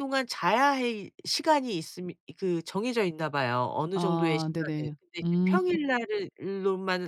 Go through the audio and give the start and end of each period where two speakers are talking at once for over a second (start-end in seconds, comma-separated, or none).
3.9-5.6